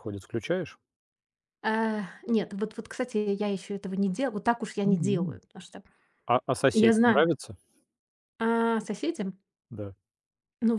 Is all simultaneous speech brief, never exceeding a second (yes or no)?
yes